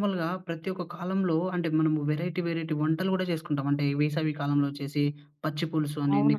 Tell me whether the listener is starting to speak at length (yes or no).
no